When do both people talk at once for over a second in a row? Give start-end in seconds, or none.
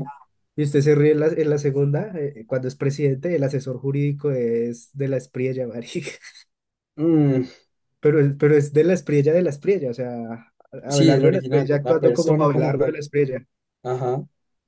10.9-13.0